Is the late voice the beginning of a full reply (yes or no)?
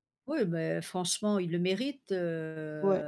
yes